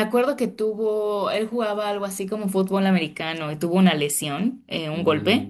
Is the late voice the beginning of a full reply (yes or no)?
no